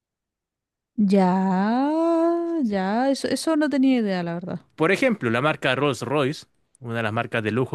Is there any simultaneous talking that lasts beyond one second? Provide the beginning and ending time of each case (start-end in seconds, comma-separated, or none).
none